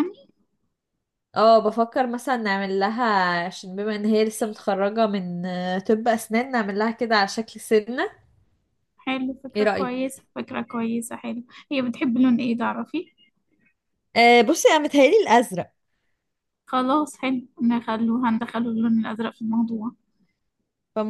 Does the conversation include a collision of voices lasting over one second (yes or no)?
no